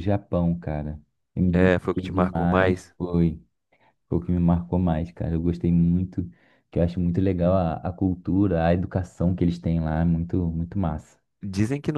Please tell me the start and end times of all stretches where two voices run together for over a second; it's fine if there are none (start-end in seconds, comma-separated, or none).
1.5-2.9